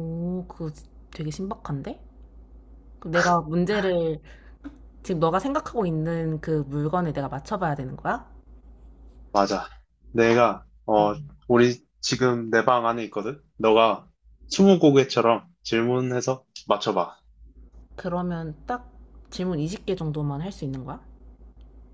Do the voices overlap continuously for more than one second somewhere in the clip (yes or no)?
no